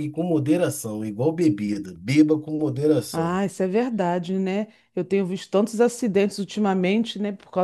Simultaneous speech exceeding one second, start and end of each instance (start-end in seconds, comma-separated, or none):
none